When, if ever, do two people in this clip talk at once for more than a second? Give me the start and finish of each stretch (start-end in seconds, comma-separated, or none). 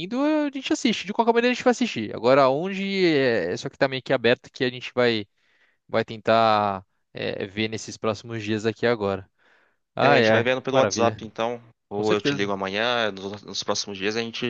10.0-11.2